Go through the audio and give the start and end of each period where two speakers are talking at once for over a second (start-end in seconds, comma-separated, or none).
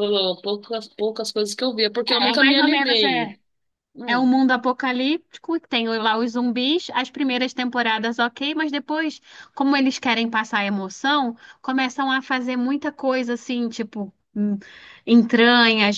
2.1-3.3